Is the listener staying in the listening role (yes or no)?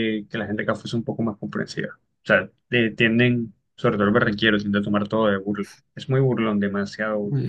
no